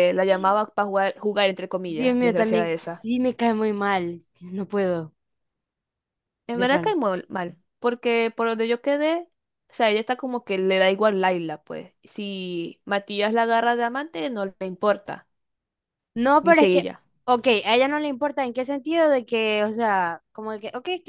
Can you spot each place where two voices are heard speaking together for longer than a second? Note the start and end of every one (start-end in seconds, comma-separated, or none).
1.9-3.1